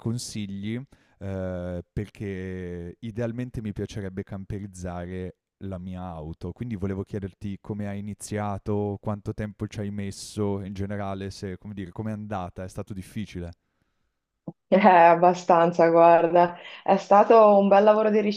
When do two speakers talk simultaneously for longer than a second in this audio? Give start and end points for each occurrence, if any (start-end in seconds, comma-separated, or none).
none